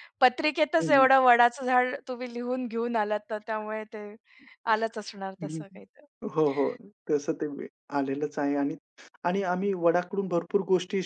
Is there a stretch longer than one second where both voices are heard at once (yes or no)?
no